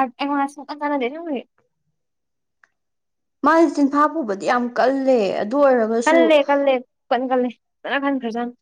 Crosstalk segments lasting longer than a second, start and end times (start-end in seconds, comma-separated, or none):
none